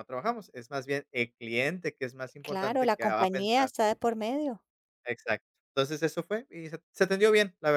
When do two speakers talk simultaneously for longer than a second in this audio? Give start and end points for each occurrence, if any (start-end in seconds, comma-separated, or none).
2.4-3.7